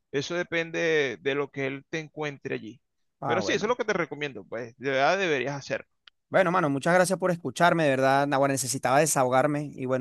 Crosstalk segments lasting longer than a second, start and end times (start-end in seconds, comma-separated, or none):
none